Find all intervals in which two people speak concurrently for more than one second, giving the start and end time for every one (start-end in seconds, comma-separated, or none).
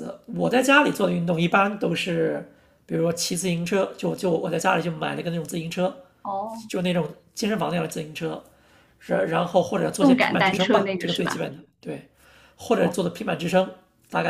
10.0-11.4